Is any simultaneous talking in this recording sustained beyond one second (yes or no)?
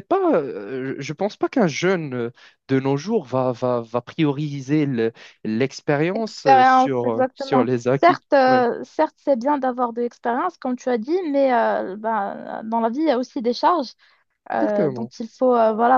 yes